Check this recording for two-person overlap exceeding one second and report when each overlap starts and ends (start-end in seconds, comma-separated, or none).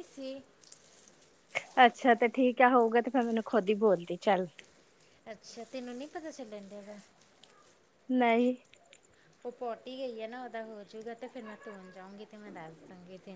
none